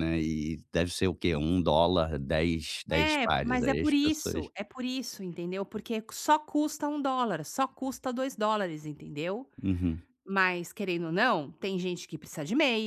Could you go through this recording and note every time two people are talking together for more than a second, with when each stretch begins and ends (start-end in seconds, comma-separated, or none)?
2.9-4.5